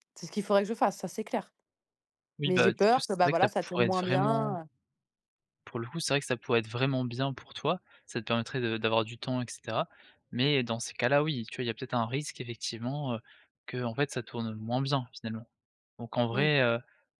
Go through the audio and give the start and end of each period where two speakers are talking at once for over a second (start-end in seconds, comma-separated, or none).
2.4-4.6